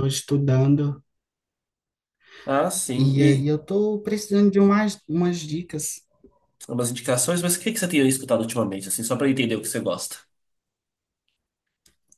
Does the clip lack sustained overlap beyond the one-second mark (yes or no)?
yes